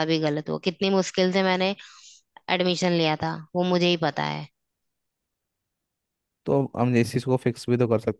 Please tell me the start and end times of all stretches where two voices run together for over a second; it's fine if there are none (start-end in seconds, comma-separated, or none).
none